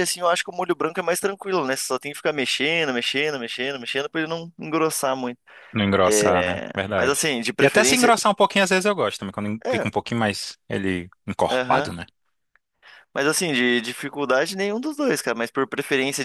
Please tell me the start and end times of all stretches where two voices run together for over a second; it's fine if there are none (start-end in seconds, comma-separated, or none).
6.0-8.1